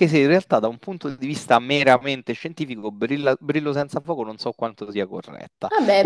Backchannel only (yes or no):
no